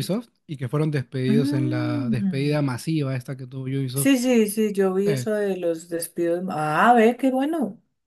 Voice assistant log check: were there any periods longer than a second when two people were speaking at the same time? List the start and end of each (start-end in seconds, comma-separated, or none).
1.3-2.6